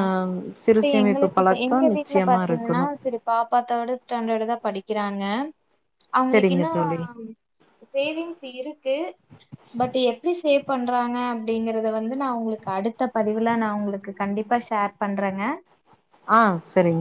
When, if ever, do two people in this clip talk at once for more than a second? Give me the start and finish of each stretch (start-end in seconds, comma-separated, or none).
0.7-2.9